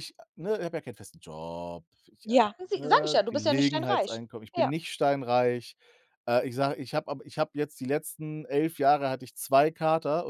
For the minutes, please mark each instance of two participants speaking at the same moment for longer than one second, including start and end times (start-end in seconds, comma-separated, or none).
2.8-4.7